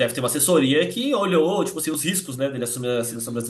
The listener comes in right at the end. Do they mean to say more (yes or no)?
yes